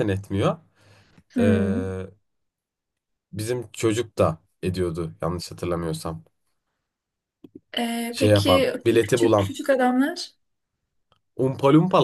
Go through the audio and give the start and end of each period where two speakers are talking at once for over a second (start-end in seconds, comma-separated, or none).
8.1-9.5